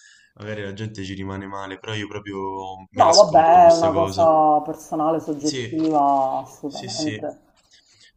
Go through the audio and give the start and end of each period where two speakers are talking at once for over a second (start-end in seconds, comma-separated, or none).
2.9-4.3